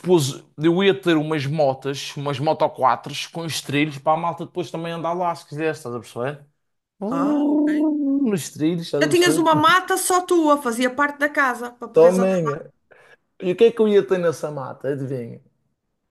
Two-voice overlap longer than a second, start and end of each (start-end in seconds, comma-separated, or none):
none